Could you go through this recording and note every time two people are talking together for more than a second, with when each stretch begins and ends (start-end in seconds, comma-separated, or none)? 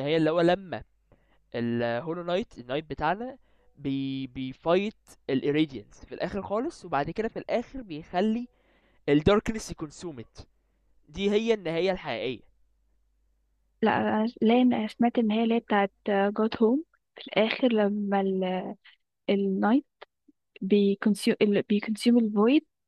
none